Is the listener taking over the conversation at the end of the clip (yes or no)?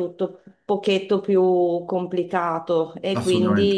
no